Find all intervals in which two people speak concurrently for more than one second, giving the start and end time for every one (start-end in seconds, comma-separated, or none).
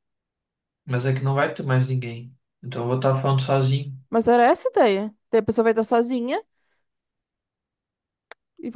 none